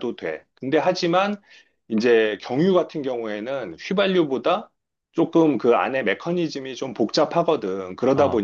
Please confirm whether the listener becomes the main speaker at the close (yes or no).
no